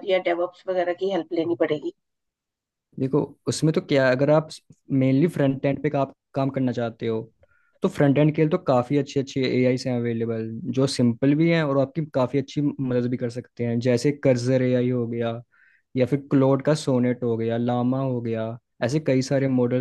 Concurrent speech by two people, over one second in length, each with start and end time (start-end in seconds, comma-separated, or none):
none